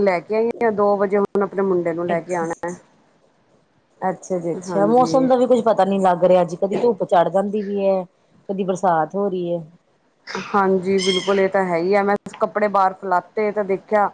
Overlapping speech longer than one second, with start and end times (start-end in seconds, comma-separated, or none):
none